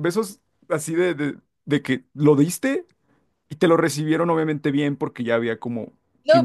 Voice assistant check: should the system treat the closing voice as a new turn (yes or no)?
yes